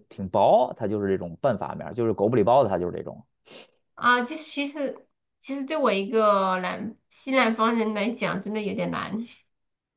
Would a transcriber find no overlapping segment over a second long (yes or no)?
yes